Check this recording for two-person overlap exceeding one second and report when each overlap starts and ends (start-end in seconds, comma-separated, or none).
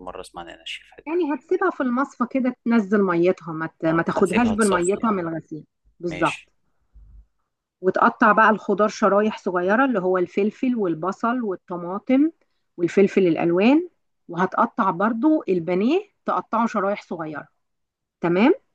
3.9-5.1